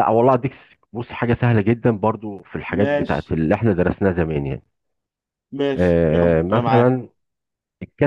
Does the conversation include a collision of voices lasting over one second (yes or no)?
yes